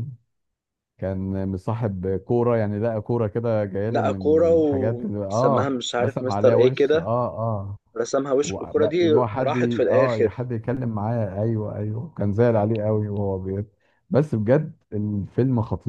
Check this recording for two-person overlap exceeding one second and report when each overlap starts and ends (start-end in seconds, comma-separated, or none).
3.9-7.1, 8.4-10.5